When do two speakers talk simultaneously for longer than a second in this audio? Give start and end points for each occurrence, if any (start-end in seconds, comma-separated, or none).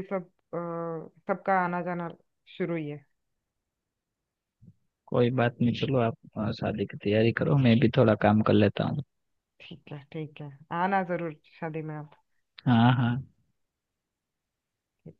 none